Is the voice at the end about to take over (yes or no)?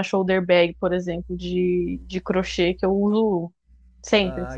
yes